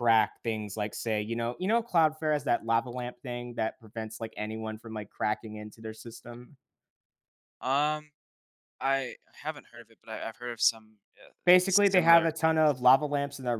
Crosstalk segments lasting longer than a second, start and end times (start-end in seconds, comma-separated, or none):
11.7-12.9